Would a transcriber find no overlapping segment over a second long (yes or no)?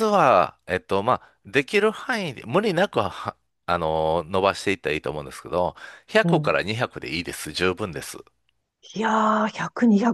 yes